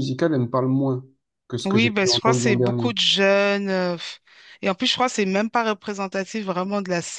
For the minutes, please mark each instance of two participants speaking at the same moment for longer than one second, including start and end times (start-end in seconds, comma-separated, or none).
1.6-3.0